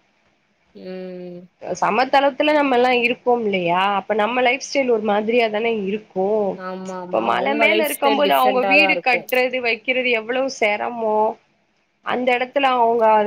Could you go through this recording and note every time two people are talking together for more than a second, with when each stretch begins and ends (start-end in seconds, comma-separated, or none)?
7.0-9.3